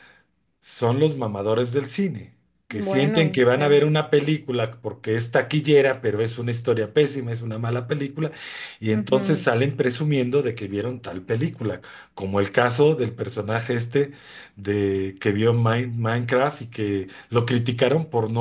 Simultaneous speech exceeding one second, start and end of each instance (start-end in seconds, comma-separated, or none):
2.7-3.9